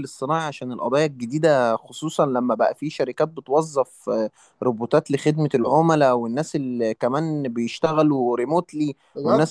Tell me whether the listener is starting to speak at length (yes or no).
no